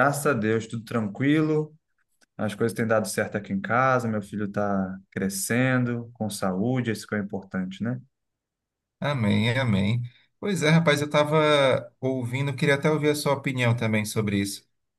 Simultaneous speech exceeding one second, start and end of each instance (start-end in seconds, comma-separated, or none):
none